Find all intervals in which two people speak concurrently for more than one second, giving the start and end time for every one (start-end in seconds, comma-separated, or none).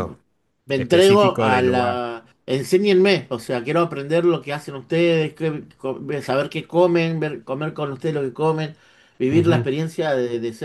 0.7-2.0